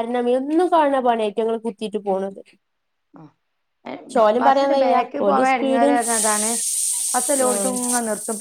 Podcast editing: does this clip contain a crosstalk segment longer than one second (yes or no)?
yes